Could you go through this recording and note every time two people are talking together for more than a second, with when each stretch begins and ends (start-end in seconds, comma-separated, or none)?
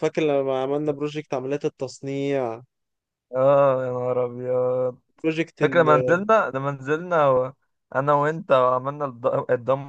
none